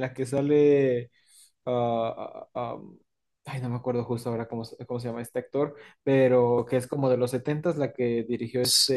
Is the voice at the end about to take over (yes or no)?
yes